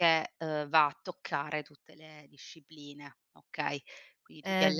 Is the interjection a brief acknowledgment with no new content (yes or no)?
no